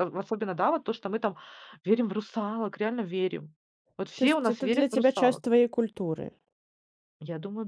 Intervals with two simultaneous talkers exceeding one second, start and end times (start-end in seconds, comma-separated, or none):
4.2-5.4